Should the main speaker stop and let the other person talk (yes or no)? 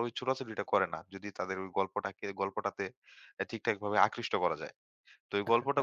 no